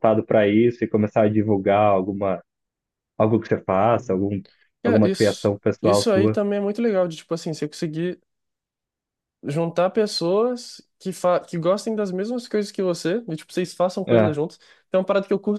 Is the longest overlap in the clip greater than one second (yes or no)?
yes